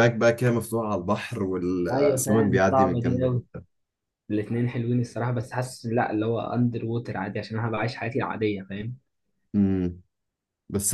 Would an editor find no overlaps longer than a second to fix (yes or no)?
no